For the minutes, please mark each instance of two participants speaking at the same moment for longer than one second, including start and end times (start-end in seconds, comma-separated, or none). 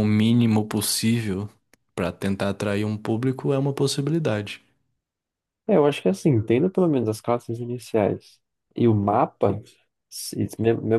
none